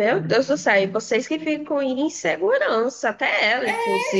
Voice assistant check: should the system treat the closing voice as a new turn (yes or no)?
yes